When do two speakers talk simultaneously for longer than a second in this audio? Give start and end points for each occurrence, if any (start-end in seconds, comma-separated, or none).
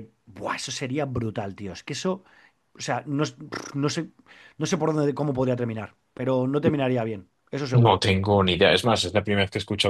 none